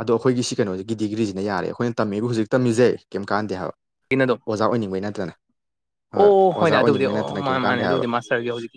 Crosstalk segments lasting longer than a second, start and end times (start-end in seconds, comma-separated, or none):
6.6-8.0